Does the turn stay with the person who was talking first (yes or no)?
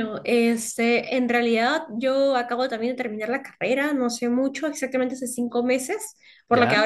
yes